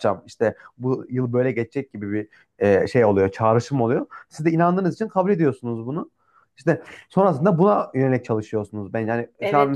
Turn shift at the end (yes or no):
yes